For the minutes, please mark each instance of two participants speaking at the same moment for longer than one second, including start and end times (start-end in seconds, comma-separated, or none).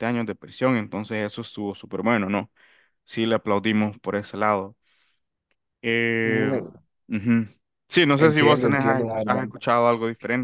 8.2-9.5